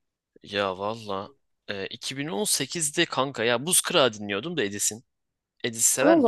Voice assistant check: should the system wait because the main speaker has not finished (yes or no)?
no